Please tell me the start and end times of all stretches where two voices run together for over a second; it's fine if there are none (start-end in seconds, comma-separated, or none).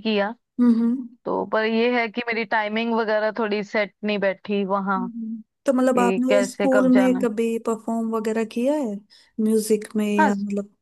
5.7-7.3